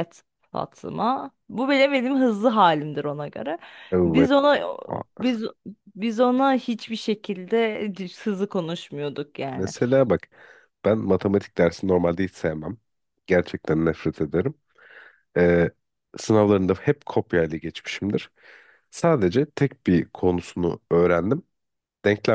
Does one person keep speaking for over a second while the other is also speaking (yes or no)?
no